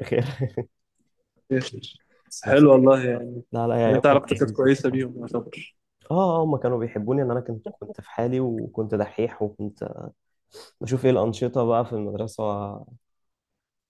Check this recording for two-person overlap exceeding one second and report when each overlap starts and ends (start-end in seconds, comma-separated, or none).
3.9-5.1